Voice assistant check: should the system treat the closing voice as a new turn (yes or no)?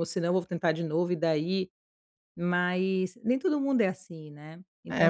yes